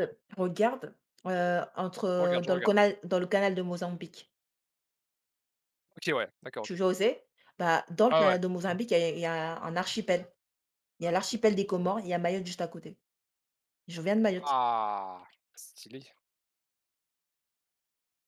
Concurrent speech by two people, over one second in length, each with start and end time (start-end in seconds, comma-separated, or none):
none